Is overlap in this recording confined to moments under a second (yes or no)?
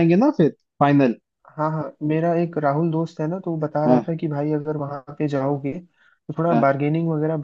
yes